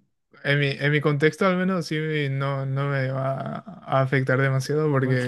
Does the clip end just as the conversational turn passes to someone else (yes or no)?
no